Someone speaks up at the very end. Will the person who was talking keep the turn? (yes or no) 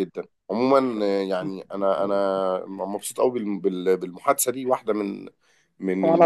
yes